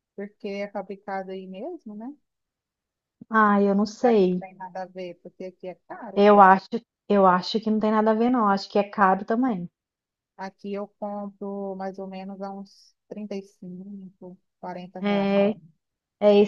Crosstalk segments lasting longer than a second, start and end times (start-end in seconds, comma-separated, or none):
none